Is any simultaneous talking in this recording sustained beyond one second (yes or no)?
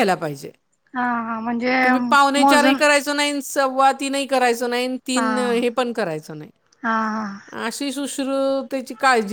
no